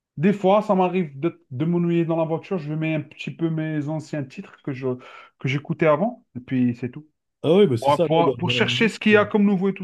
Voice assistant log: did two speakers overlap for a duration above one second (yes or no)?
yes